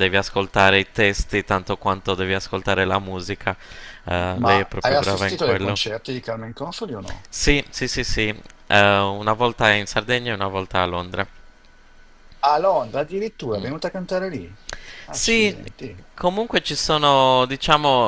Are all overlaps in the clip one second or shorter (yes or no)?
no